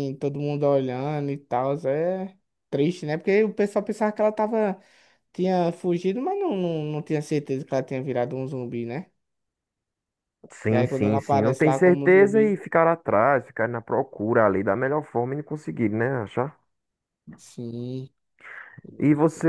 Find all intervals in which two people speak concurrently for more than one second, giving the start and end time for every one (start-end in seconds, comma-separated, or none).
10.7-12.6